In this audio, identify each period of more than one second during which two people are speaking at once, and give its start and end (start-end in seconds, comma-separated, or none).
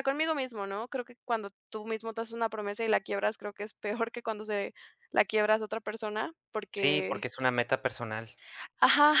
none